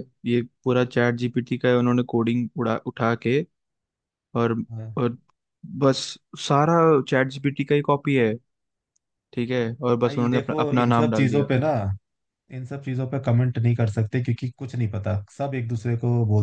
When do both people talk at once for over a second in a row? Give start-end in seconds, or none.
10.0-11.4